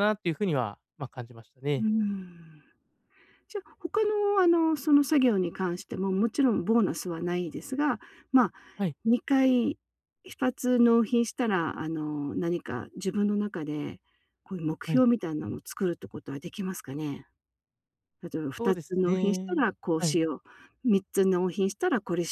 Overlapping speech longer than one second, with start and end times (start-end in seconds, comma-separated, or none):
18.6-20.2